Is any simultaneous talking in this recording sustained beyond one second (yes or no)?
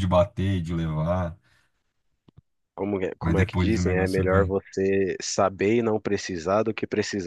yes